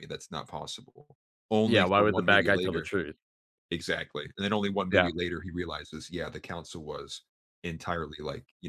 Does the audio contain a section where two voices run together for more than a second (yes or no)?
yes